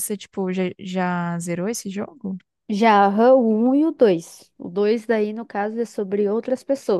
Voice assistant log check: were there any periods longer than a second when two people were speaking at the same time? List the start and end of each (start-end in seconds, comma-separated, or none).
none